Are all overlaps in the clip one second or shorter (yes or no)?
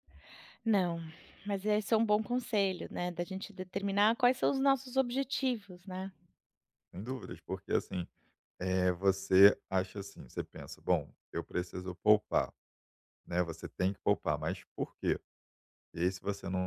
yes